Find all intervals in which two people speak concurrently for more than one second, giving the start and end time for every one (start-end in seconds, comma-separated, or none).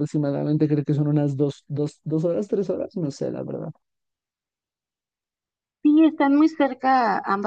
none